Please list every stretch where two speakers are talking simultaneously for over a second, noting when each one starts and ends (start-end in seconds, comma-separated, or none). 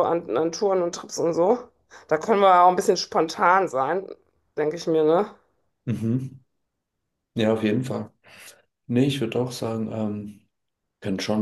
none